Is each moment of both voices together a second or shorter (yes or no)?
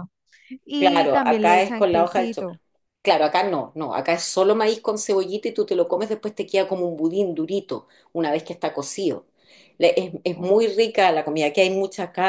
no